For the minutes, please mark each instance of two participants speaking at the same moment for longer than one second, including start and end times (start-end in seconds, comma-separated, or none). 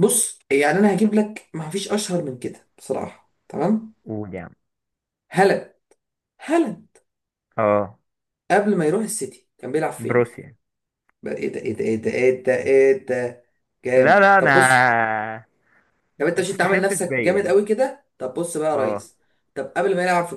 16.3-17.6